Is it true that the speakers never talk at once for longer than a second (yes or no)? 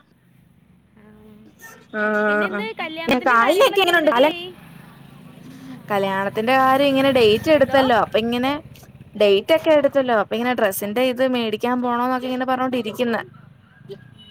no